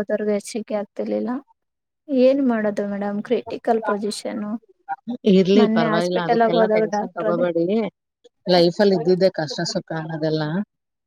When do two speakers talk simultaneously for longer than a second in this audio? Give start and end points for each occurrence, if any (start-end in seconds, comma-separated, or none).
5.6-7.5